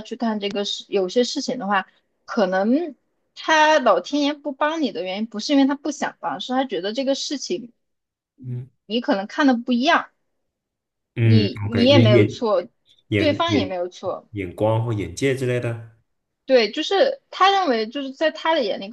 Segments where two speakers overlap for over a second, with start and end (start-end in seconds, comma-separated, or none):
11.2-12.4